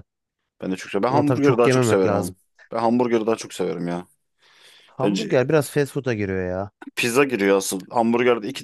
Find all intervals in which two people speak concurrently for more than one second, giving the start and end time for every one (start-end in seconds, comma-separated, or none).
1.1-2.4